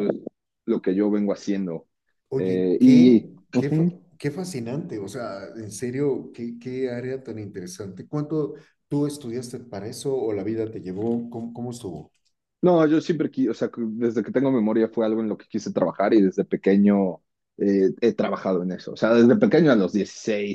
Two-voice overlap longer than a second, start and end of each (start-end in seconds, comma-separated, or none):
2.4-4.0